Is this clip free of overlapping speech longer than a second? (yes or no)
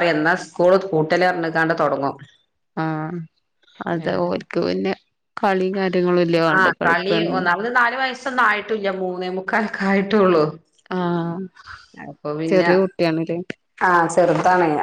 yes